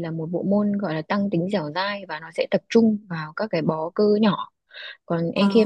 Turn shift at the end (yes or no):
no